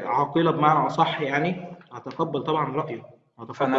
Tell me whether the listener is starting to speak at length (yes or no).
yes